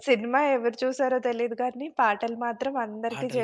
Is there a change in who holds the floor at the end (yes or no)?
yes